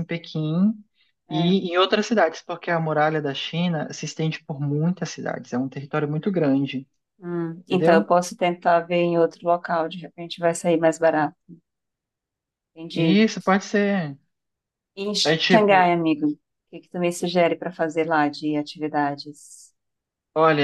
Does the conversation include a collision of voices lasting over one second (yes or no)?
no